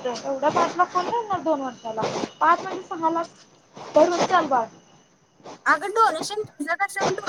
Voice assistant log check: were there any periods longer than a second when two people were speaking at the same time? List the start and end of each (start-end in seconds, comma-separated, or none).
none